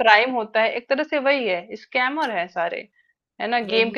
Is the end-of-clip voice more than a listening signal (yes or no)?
no